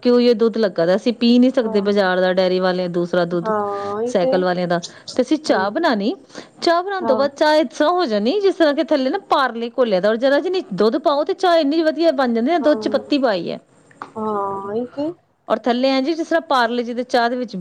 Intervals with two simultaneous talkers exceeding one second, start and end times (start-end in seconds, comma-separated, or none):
none